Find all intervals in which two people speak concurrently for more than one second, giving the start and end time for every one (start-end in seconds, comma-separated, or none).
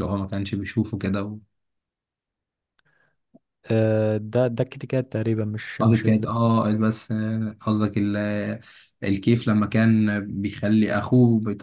none